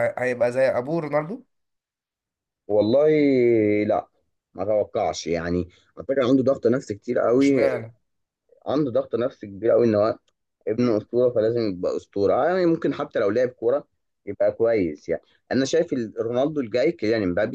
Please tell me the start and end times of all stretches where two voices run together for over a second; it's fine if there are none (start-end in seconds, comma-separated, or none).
none